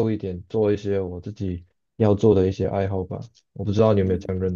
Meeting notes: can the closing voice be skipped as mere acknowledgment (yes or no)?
no